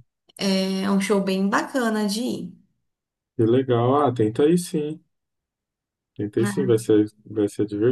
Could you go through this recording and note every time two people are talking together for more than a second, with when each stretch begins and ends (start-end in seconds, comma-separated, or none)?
none